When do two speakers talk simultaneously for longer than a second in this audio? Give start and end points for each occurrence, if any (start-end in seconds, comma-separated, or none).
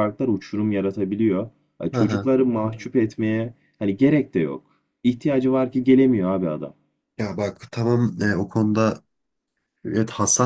none